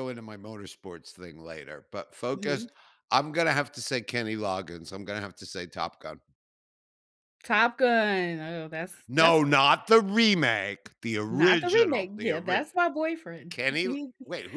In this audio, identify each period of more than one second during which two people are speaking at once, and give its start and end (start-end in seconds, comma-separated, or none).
11.3-12.7